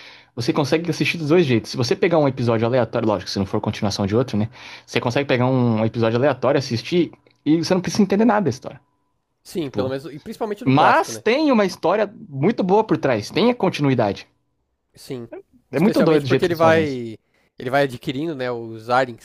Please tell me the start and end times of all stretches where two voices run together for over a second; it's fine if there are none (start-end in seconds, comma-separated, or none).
15.7-17.0